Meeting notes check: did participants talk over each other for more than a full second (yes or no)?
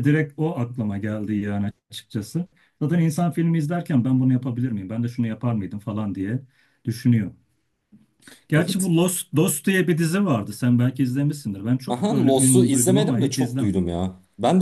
yes